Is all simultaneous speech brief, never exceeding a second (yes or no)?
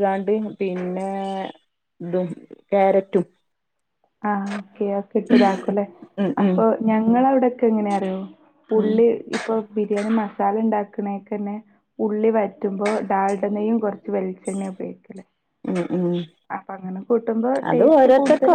yes